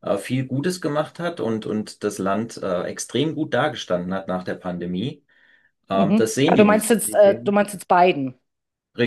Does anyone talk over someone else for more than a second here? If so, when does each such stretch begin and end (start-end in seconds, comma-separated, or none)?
5.9-7.6